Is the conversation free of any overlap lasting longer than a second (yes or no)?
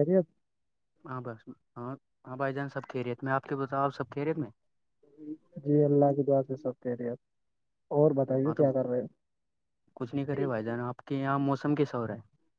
yes